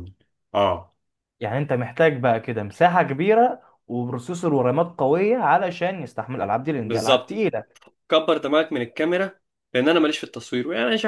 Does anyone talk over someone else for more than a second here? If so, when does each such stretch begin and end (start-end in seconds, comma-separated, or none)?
none